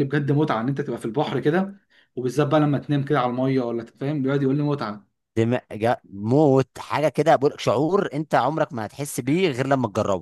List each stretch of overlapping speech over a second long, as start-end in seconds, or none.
none